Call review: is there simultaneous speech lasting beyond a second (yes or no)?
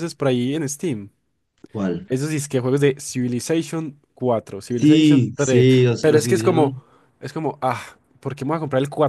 yes